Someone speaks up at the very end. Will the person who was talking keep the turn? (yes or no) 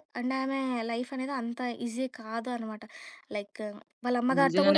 no